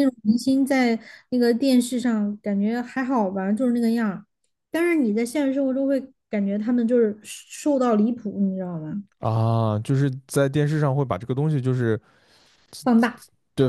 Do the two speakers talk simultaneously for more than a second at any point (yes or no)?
no